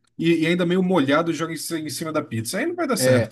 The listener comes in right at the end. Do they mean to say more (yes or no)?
yes